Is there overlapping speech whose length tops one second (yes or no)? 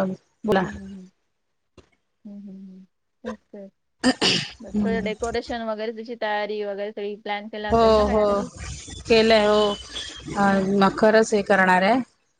no